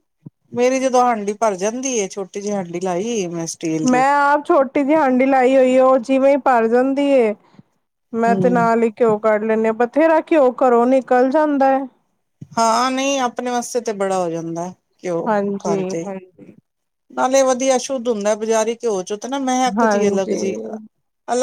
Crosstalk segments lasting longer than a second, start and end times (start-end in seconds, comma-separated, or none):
none